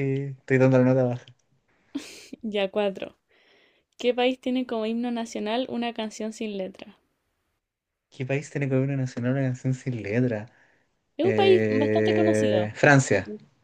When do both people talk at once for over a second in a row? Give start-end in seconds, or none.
11.2-12.7